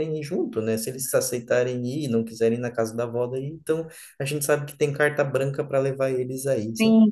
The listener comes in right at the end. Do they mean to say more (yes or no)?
yes